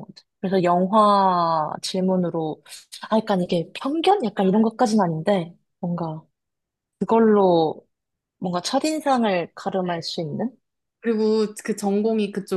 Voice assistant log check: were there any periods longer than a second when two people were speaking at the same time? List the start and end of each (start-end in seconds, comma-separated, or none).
none